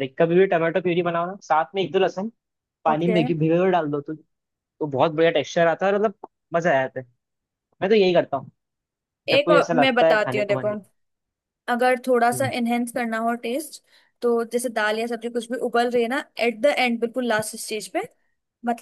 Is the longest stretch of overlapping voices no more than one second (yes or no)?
no